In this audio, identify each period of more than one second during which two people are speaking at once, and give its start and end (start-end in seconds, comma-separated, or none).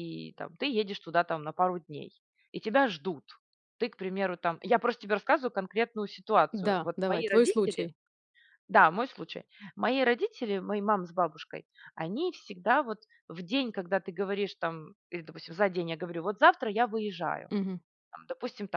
6.5-7.9